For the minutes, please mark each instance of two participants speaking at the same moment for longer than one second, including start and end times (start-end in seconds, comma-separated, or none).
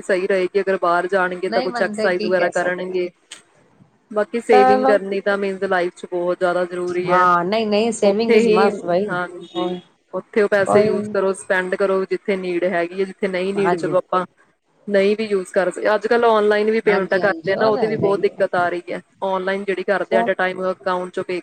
1.5-3.0, 16.9-18.4